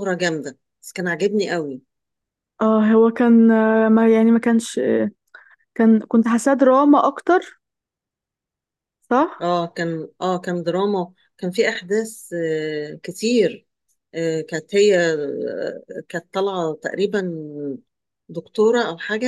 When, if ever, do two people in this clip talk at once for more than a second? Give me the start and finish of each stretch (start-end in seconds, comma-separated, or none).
none